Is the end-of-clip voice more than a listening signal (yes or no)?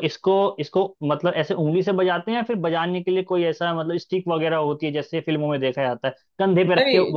no